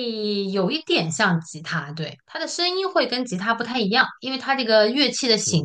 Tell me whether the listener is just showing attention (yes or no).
yes